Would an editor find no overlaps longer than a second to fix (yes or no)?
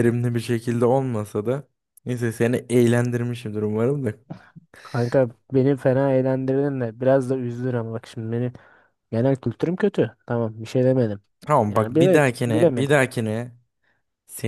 no